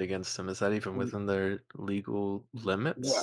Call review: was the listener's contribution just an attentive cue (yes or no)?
no